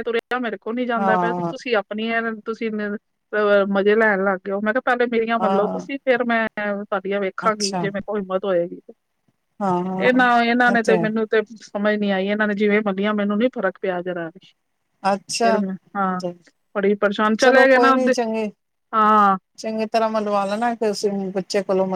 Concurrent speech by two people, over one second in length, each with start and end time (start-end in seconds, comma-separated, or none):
none